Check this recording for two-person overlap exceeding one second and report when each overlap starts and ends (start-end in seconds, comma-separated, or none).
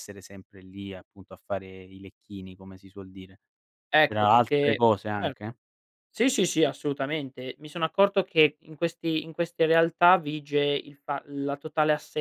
4.0-5.5